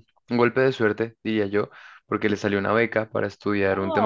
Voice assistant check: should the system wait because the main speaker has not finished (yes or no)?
yes